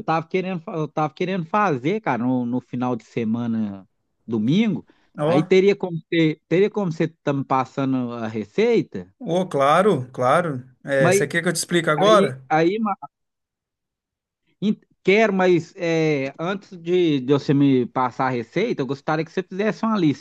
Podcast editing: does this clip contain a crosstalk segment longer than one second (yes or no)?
no